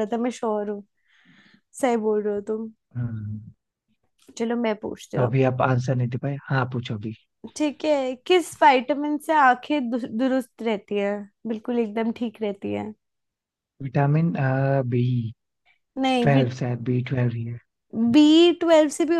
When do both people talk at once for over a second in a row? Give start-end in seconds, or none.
none